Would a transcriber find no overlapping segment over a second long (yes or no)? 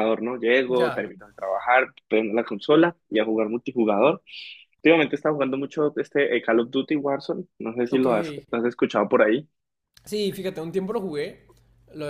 yes